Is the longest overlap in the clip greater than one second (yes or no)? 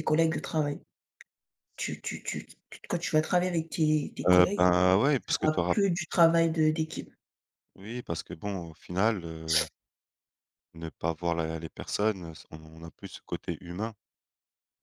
no